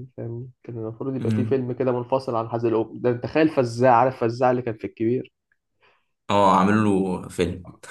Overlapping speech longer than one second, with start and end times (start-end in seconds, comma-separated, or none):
none